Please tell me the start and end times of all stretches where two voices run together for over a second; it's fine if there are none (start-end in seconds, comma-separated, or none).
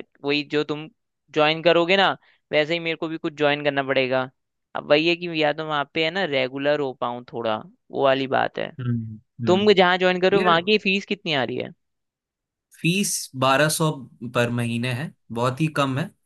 none